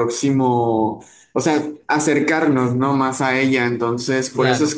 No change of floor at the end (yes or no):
yes